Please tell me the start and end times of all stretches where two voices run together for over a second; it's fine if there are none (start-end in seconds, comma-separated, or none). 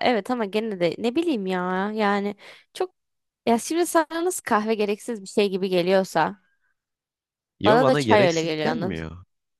7.7-9.0